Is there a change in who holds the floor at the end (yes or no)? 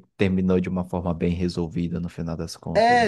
yes